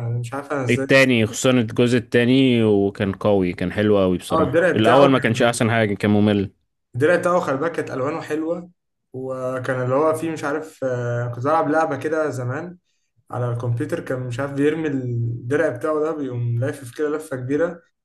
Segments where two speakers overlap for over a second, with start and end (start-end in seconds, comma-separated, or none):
4.3-5.6